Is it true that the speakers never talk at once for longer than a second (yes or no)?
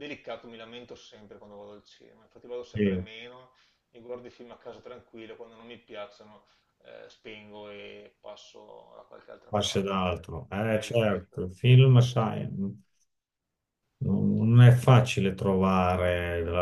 no